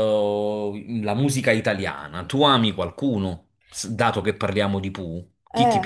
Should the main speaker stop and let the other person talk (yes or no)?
yes